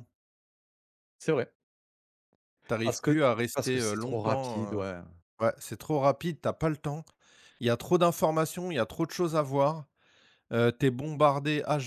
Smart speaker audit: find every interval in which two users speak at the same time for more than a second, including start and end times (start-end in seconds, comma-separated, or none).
2.8-4.8